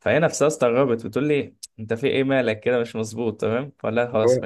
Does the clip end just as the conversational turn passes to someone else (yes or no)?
no